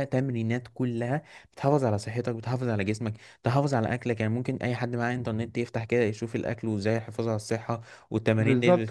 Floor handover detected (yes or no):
yes